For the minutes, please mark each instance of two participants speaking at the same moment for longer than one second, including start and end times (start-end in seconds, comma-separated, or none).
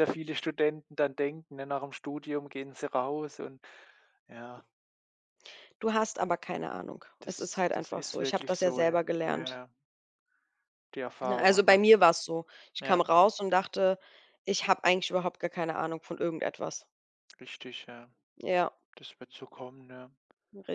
7.2-9.6